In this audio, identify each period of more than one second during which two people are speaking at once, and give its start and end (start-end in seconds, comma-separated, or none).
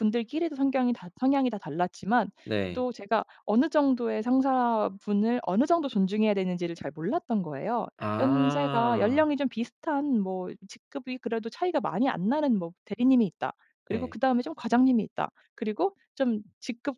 8.0-9.3